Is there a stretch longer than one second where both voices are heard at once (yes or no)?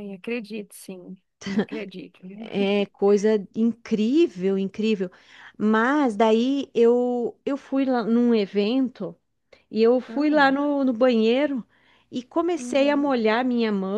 no